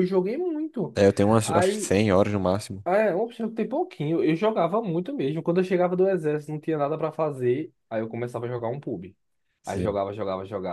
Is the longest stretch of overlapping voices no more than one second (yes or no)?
yes